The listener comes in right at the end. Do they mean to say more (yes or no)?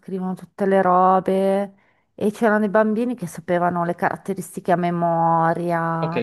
yes